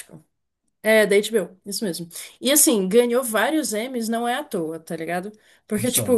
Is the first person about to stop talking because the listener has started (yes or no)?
no